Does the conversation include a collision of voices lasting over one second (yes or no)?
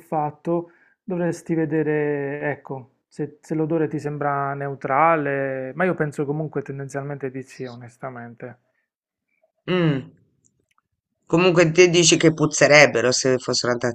no